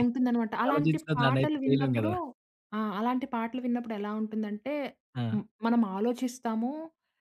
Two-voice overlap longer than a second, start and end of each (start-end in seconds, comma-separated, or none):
0.7-2.1